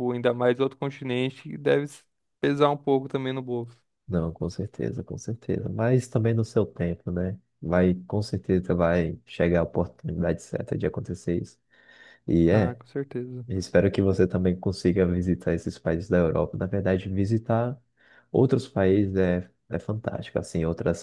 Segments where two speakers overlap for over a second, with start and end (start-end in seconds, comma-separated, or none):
none